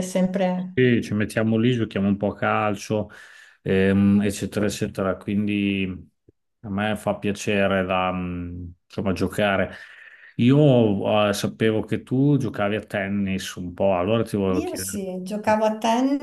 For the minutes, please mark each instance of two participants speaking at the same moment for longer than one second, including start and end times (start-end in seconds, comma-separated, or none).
none